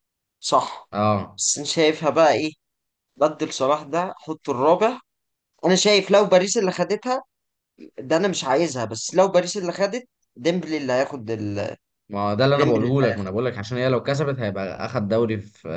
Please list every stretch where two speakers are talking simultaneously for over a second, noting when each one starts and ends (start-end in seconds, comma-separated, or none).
none